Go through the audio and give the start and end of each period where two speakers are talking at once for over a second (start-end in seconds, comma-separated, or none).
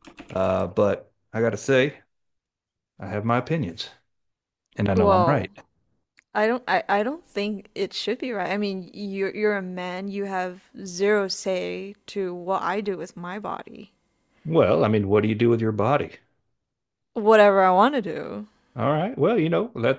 none